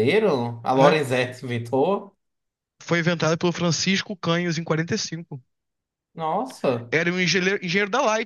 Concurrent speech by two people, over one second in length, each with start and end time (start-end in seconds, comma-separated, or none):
none